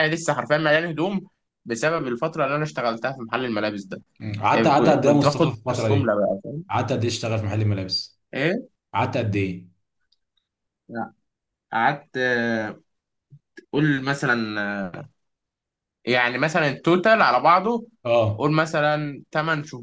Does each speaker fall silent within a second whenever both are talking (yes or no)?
no